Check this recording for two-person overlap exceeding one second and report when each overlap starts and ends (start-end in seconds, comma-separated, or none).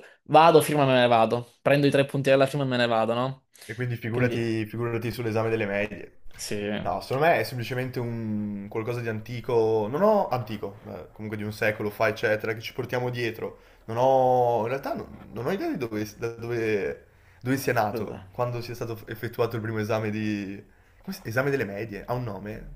none